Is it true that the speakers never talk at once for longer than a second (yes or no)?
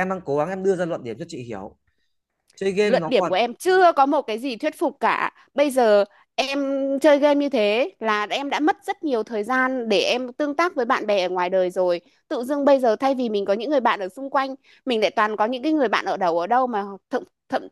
yes